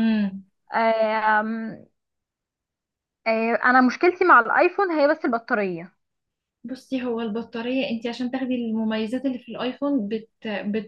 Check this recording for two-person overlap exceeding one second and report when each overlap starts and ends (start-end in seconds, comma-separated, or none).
none